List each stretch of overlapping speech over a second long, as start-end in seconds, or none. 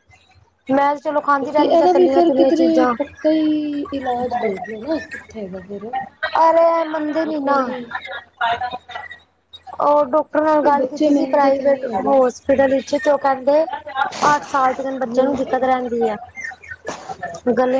1.4-2.9, 10.6-12.1